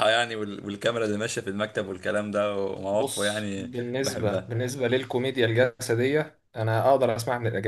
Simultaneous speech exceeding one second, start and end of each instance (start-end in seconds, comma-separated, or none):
2.9-4.5